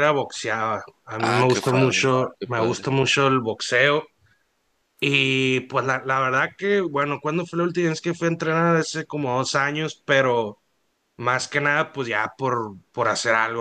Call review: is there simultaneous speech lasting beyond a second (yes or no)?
yes